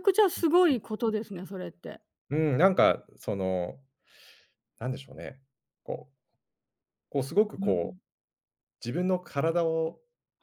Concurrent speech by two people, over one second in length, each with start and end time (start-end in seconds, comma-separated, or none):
none